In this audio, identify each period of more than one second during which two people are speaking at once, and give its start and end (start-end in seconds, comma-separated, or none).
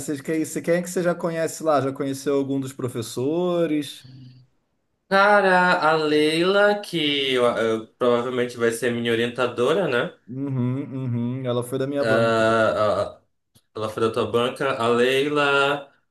none